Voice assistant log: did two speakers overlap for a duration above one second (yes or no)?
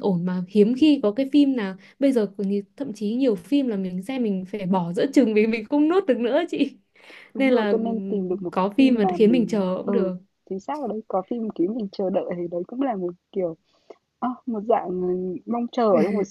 yes